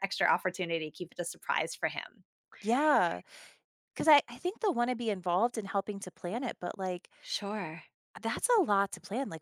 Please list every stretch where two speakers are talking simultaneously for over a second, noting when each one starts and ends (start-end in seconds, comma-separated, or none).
none